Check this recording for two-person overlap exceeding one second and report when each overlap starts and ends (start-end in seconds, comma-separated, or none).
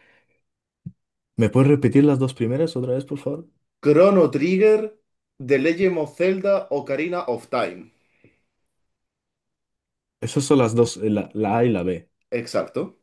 none